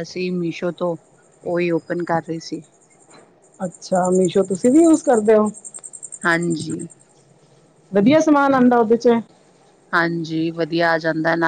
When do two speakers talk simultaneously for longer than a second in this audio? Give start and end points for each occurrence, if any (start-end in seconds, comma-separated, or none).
none